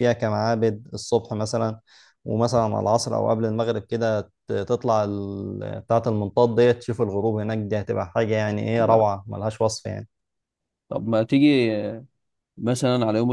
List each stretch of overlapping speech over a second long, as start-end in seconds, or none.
none